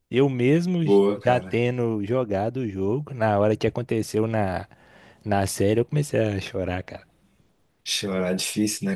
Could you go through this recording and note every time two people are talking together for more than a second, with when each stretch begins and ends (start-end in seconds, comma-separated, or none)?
none